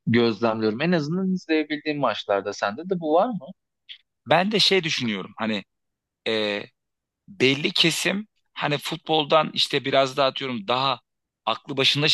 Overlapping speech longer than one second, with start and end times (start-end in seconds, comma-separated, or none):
none